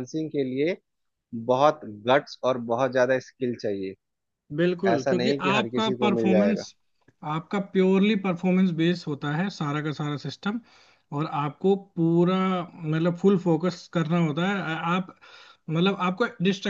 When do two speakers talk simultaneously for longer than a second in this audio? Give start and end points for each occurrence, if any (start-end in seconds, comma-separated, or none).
4.9-6.6